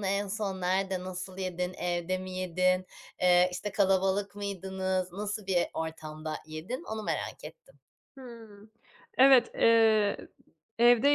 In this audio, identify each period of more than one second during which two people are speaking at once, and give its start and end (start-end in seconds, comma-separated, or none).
none